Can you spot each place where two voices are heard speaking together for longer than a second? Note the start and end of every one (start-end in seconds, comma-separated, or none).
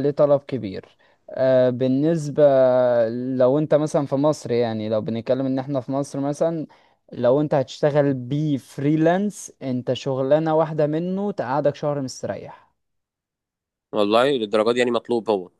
none